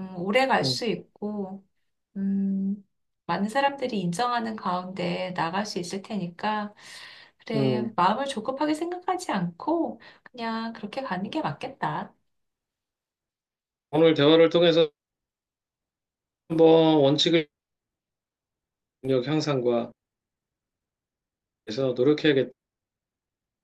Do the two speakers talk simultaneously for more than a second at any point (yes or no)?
no